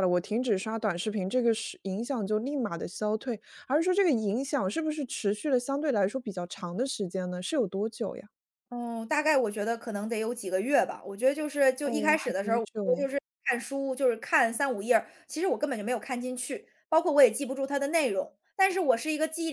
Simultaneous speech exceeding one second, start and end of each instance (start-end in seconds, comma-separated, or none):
11.8-13.1